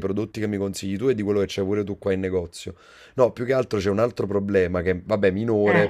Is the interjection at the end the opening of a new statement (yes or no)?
no